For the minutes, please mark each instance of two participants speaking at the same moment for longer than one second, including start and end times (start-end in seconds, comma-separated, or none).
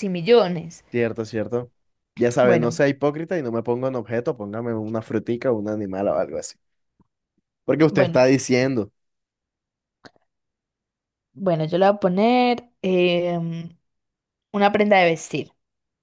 none